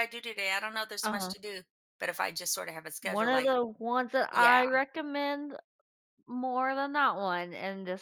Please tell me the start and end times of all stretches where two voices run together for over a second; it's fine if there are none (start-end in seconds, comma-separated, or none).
none